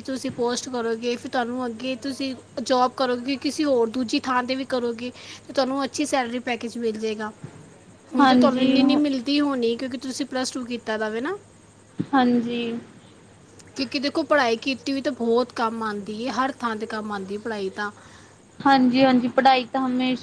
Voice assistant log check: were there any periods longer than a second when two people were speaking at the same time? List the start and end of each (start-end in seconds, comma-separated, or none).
none